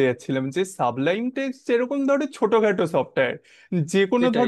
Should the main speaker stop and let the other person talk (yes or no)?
no